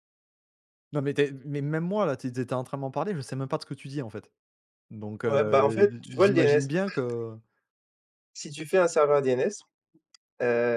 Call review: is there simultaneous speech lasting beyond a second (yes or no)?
yes